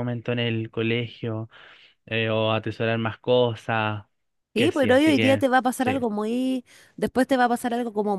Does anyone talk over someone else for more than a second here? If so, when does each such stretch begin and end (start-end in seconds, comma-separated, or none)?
4.5-6.0